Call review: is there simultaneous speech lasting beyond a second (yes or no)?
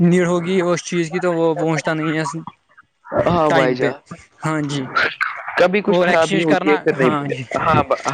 yes